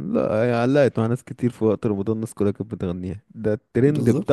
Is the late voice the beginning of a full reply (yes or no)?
no